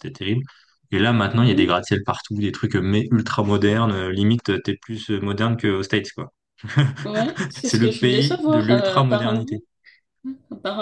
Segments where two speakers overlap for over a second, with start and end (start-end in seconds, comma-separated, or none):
7.6-9.6